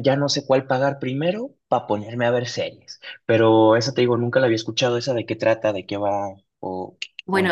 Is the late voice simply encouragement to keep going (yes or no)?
no